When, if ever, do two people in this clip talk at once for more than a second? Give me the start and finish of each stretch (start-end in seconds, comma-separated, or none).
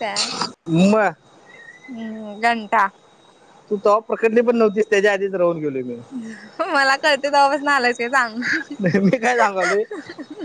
none